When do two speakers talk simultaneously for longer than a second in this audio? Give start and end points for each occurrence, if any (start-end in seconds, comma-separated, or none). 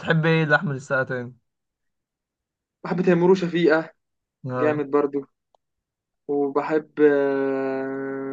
none